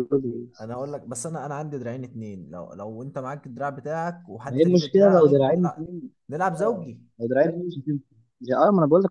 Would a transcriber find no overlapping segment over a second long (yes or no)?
no